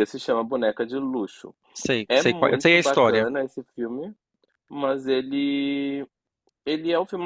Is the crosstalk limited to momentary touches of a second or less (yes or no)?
no